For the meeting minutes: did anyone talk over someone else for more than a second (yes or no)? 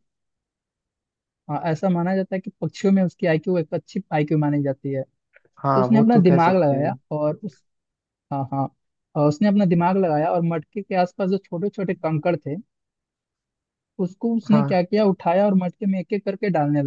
yes